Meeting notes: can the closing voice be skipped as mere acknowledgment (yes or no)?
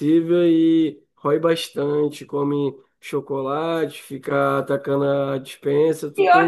no